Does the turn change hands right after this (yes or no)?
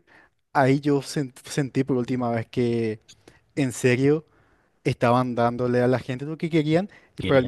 no